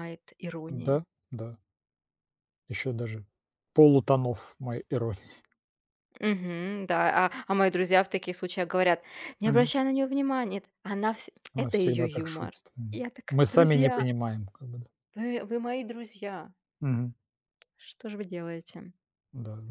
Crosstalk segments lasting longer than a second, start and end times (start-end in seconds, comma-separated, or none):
11.5-14.1